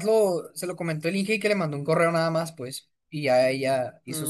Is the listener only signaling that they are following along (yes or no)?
no